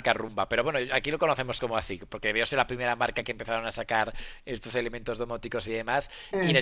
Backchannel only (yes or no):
yes